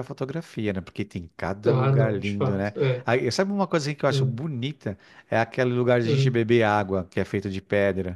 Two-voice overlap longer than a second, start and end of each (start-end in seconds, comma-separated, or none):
1.7-3.1